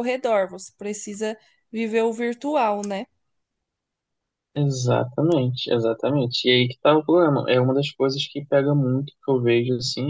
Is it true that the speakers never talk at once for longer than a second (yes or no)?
yes